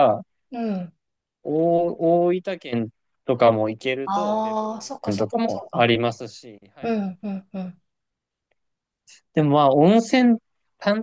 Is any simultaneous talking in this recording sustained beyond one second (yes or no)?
yes